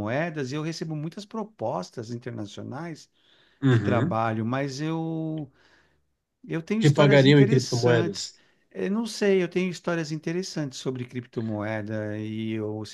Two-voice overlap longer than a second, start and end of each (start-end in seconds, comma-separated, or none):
6.8-8.3